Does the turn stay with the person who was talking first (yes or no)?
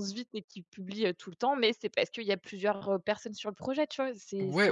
no